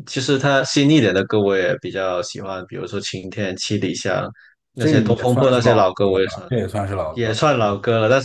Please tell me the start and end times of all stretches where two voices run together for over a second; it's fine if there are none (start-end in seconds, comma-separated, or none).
4.7-6.5